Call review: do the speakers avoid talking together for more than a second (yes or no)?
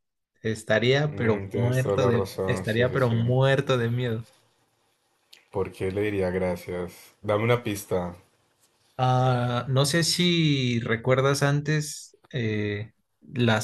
no